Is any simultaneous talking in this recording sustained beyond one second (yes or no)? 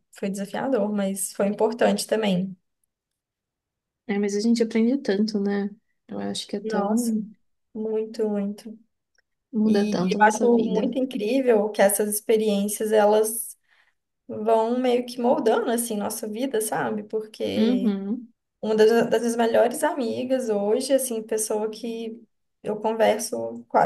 yes